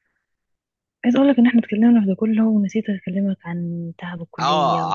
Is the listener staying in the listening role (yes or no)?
no